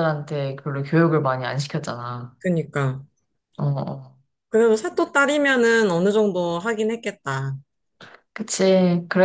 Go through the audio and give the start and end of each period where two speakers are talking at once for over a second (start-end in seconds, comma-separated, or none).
none